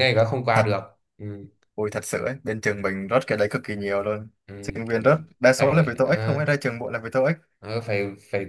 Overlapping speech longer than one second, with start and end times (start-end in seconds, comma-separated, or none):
4.5-6.4